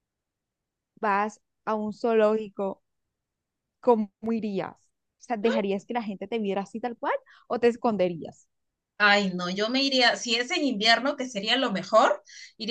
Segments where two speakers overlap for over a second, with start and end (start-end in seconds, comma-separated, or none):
none